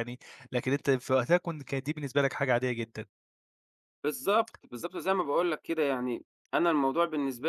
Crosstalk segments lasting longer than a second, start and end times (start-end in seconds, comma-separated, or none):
none